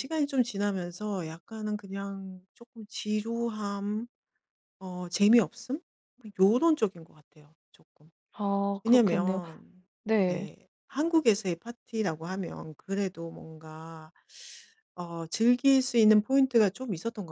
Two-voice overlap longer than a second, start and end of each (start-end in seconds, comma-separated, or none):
none